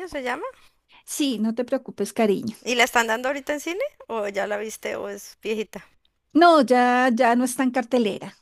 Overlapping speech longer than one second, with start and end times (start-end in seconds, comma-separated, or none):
none